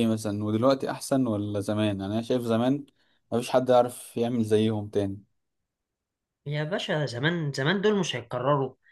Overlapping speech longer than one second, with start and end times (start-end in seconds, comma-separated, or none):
none